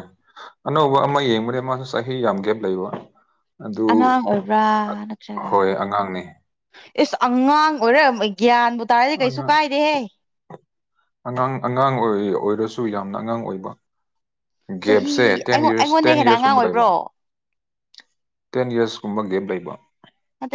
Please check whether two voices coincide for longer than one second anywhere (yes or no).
yes